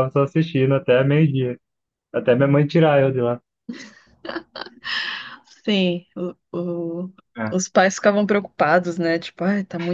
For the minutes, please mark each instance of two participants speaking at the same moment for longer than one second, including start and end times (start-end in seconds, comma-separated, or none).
none